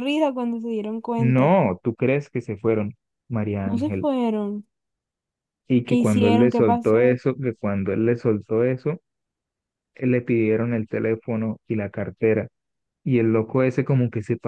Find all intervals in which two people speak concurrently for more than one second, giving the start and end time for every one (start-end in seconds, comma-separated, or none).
5.8-7.2